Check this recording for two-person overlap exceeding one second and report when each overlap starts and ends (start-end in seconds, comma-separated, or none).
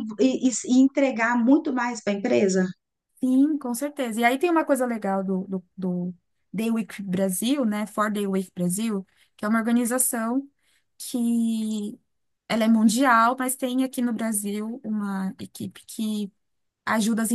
none